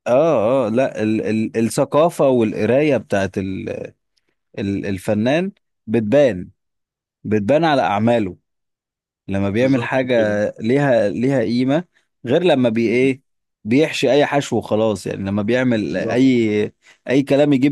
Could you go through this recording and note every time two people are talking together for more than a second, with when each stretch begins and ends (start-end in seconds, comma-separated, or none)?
none